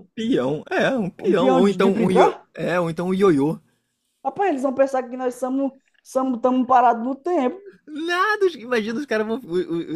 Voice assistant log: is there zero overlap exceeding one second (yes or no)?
no